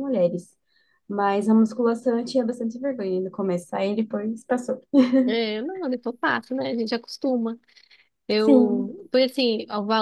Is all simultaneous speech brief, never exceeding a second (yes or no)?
yes